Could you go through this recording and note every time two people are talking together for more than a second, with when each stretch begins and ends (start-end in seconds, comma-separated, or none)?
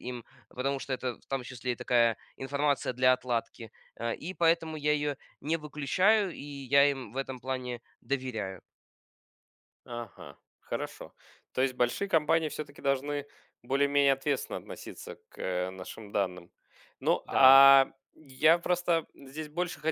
none